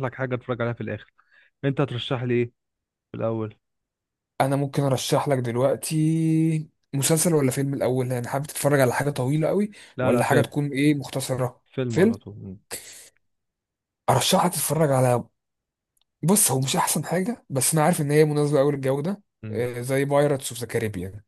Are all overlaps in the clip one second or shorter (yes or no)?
yes